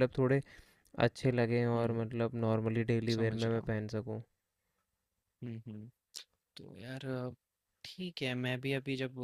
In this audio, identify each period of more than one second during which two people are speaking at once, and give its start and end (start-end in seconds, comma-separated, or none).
none